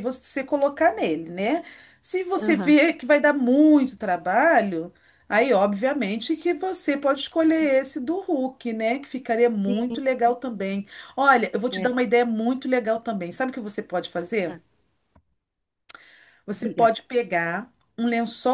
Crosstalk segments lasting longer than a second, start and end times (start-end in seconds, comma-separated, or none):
none